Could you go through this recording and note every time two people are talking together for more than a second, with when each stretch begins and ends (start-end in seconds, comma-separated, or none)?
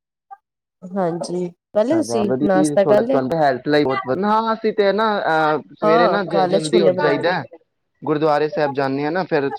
5.8-7.4